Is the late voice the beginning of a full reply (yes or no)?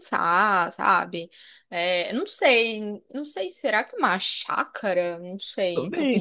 yes